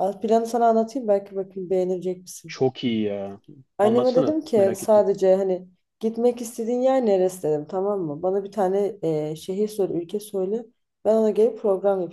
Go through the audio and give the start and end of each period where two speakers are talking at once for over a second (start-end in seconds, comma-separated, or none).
3.8-5.0